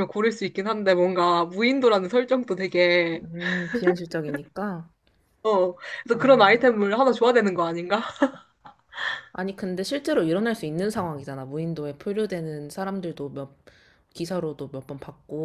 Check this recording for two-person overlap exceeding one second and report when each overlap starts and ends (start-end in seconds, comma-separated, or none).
none